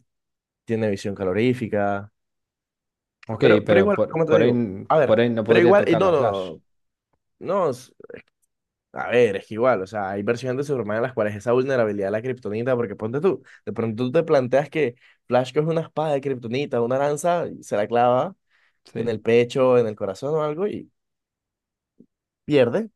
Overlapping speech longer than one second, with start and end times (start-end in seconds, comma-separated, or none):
3.4-6.4